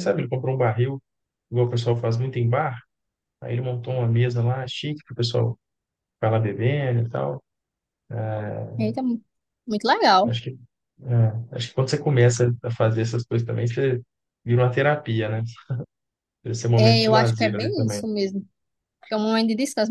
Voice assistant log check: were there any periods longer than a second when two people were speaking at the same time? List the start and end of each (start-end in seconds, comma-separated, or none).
16.8-18.0